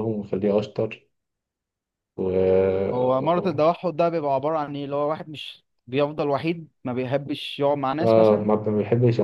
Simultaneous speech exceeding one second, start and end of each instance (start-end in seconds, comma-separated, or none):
none